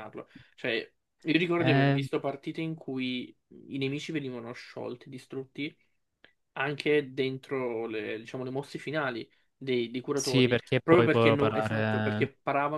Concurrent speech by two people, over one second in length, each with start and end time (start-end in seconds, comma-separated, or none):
10.1-12.3